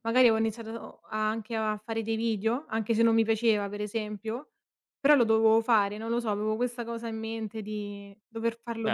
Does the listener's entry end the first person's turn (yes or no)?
yes